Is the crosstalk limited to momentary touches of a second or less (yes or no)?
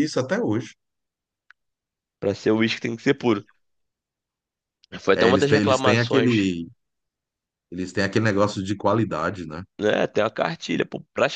no